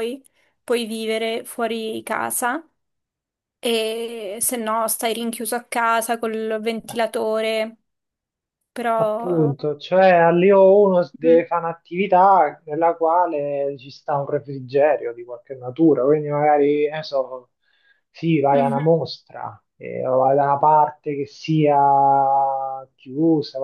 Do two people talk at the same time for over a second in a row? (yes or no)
no